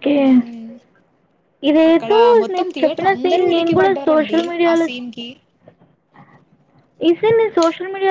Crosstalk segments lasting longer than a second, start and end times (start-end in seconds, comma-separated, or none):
1.9-4.8